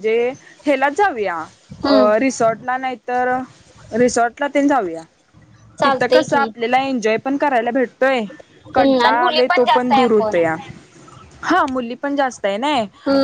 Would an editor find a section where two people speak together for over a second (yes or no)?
yes